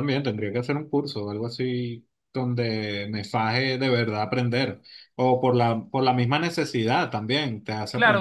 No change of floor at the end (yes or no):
no